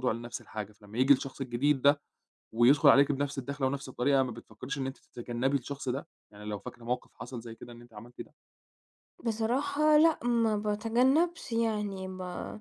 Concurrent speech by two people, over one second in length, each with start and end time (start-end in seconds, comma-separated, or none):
none